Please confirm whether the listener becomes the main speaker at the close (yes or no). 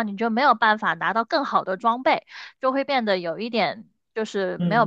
yes